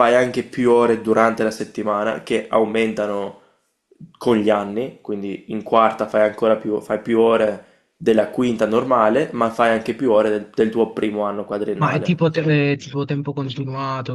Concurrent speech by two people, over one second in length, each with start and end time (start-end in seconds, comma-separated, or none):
none